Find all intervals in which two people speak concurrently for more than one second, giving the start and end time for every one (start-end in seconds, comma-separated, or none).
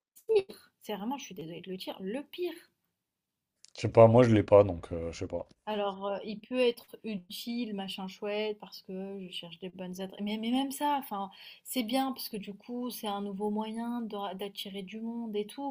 none